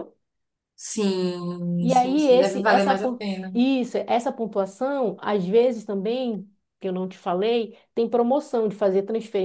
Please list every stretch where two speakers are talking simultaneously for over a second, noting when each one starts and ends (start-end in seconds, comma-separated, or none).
1.8-3.5